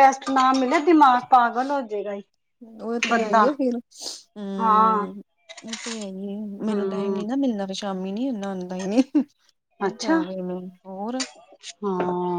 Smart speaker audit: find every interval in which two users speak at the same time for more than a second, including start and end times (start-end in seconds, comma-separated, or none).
none